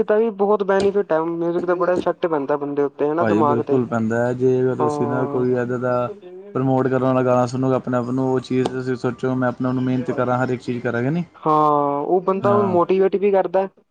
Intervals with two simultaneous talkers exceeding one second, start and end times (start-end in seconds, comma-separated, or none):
none